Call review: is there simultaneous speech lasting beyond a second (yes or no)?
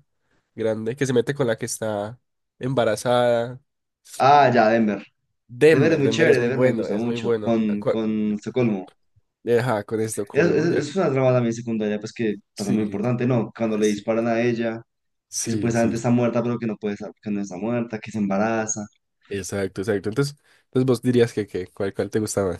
yes